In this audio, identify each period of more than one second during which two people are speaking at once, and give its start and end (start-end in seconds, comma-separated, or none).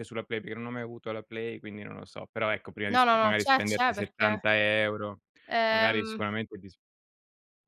2.9-4.4